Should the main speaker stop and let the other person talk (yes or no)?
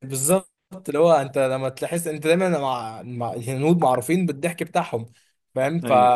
no